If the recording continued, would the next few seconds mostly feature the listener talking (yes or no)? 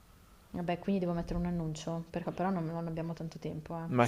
yes